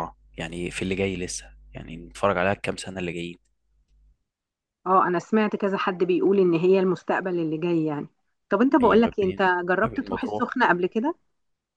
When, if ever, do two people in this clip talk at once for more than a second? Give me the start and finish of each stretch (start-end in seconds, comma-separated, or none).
8.8-10.6